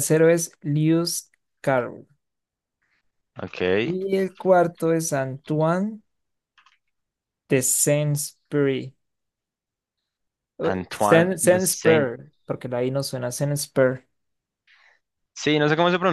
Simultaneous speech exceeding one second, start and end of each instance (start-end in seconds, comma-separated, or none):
10.7-12.1